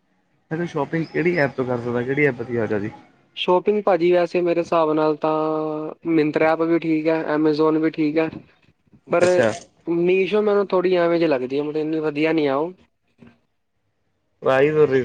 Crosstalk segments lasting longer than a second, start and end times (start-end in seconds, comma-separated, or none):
none